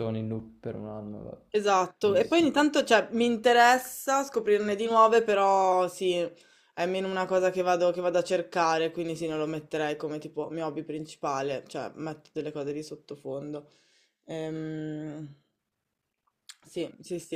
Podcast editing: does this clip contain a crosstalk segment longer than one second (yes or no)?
no